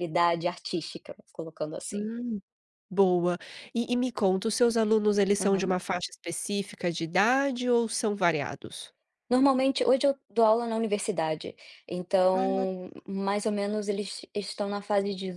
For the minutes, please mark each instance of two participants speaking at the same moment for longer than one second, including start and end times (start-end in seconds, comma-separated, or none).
none